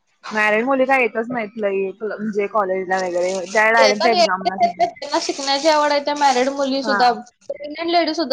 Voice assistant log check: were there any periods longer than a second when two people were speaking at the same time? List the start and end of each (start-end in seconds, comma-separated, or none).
none